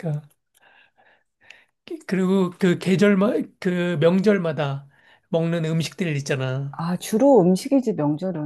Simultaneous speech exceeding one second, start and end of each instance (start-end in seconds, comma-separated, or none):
none